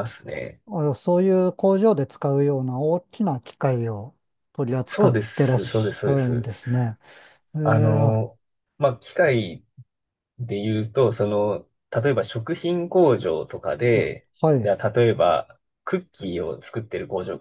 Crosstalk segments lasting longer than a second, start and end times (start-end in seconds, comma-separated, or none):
4.8-6.5